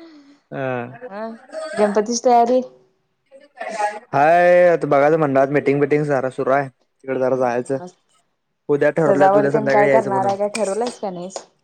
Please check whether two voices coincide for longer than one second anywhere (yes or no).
yes